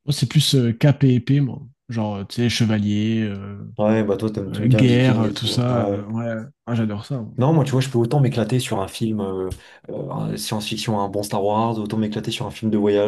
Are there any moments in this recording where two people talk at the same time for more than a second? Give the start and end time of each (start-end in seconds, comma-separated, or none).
4.5-6.1